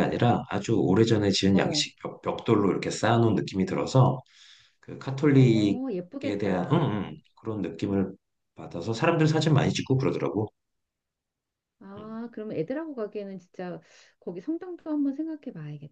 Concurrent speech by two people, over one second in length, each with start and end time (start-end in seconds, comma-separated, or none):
5.3-7.0